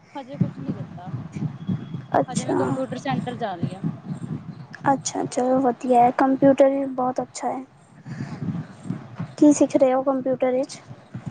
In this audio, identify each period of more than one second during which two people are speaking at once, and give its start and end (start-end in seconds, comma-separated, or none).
none